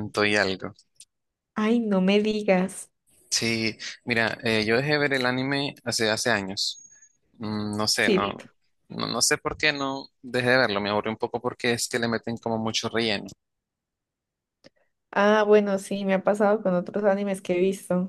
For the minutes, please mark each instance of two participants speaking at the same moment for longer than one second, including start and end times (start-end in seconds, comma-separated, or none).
none